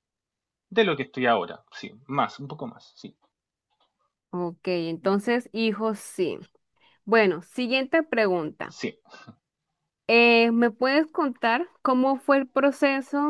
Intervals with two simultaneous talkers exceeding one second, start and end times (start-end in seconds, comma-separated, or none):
none